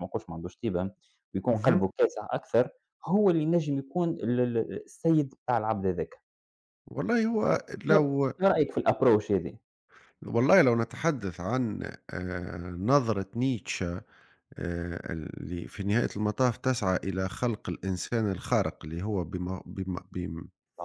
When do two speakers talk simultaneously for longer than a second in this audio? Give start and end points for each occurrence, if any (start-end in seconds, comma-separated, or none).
none